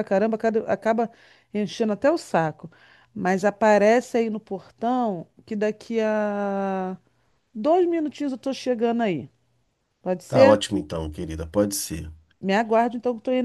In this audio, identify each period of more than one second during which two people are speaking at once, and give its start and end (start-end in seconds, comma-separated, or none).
none